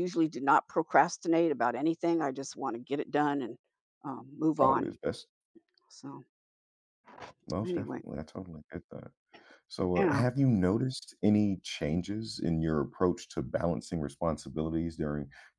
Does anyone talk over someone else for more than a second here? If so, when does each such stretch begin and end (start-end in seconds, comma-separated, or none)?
none